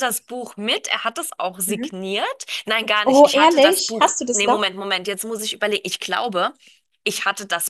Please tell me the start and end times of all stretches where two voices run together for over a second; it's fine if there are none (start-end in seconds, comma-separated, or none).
3.0-4.7